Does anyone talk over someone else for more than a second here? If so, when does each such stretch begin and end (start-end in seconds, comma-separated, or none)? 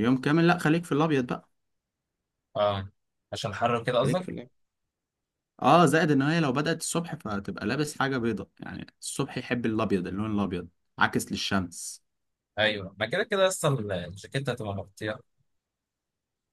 none